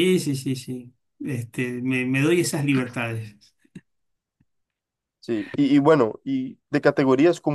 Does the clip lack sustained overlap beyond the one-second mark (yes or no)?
yes